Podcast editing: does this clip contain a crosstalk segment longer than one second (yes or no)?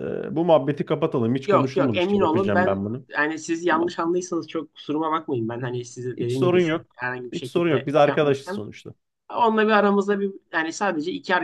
yes